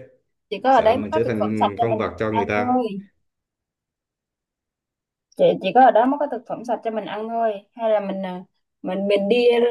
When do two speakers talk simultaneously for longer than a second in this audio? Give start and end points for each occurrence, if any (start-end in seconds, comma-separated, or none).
0.7-2.8